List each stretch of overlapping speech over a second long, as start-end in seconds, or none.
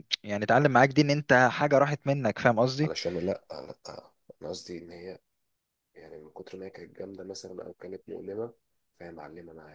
none